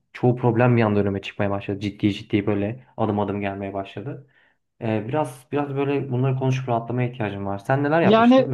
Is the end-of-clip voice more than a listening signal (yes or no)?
yes